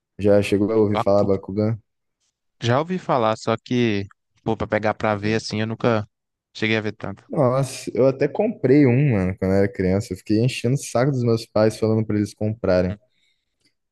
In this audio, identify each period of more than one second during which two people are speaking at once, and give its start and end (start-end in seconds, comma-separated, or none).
none